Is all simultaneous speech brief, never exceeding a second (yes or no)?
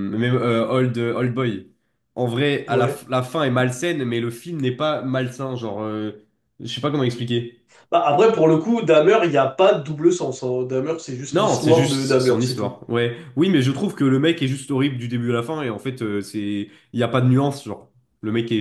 no